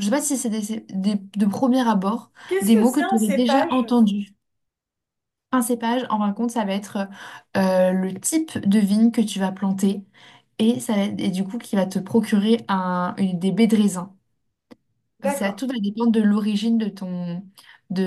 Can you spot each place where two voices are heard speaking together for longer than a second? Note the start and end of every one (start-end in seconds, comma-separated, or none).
2.5-3.7